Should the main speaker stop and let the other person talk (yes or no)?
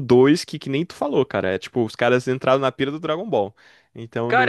yes